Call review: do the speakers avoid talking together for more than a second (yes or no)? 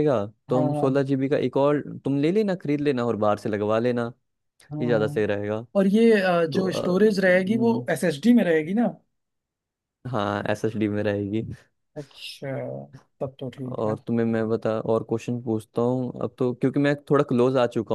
no